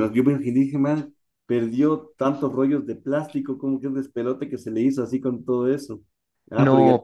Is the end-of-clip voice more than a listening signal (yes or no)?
yes